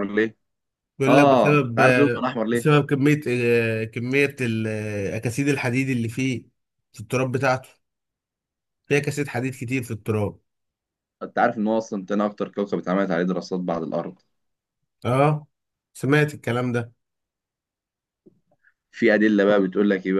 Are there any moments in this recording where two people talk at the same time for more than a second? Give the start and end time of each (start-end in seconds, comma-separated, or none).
1.1-2.7